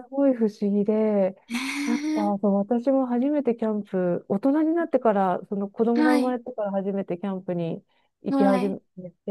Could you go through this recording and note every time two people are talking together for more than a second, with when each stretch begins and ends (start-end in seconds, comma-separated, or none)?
none